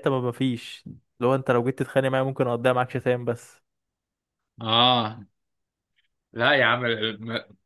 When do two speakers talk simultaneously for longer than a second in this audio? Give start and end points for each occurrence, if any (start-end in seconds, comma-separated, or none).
none